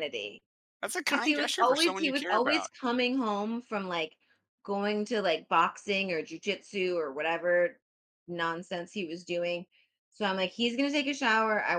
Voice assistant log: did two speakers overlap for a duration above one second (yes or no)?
yes